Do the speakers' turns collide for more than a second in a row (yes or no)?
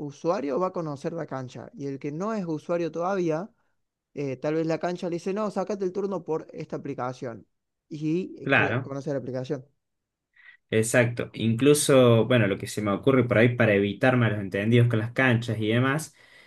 no